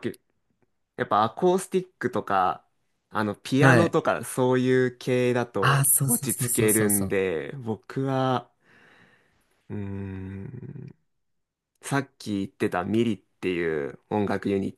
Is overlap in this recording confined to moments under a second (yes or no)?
no